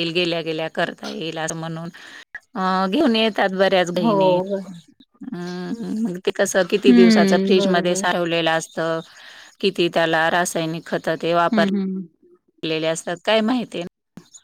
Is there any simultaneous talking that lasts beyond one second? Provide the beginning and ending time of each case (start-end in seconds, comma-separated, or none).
6.7-8.0